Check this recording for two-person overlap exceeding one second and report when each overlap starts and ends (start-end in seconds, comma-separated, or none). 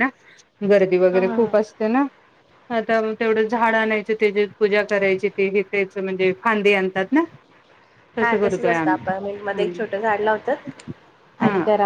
8.2-9.8